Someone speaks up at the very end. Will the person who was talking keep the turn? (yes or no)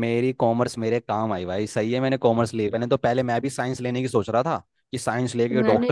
no